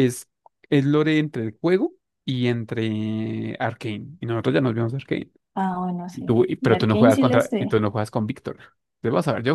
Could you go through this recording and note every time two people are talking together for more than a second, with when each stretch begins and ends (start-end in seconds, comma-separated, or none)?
6.1-7.8